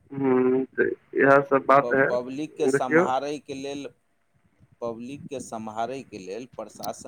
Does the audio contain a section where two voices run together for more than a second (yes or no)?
no